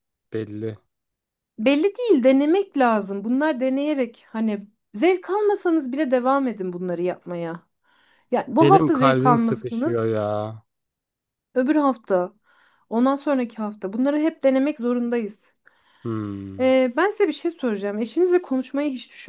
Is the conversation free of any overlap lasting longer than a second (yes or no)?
no